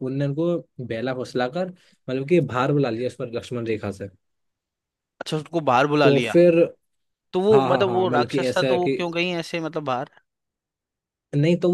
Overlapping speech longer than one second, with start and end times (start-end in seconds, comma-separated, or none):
7.5-9.0